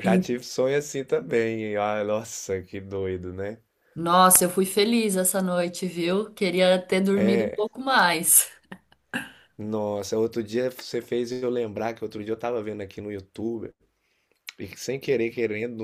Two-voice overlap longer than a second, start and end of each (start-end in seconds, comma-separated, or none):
none